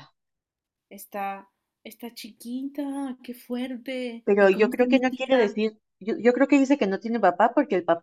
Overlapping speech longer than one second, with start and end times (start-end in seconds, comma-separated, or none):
4.2-5.6